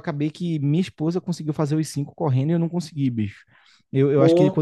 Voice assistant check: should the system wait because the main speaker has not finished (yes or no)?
yes